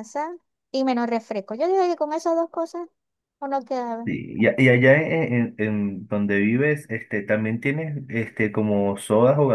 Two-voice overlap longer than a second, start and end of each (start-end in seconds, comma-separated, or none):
none